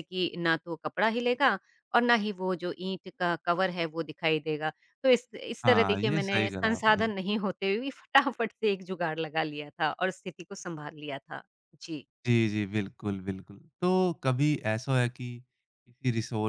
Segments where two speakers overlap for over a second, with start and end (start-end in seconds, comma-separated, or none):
5.6-7.1